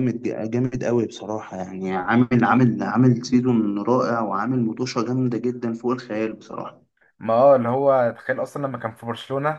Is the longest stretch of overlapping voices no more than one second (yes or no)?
yes